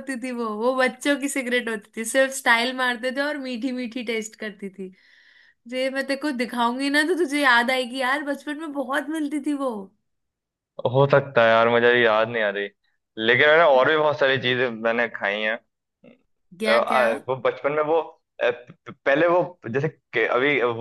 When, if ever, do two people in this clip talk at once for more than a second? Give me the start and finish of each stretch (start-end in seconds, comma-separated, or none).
none